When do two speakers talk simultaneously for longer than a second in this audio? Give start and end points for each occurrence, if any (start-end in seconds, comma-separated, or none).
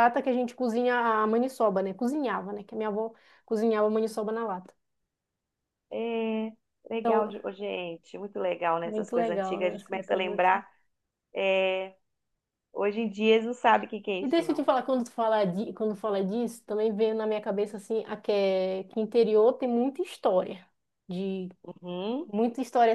8.8-10.7